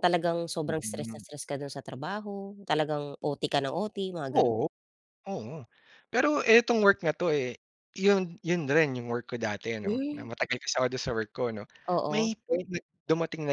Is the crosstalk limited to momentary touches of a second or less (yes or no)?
yes